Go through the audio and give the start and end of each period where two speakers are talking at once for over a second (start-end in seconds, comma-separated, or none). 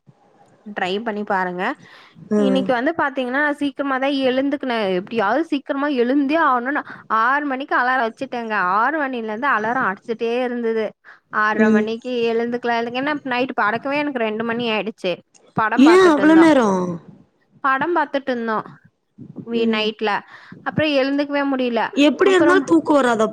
none